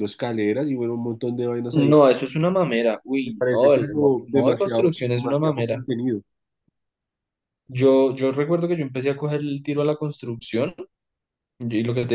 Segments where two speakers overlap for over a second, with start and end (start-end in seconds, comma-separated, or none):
3.3-5.9